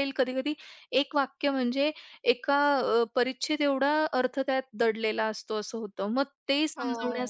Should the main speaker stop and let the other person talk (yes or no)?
no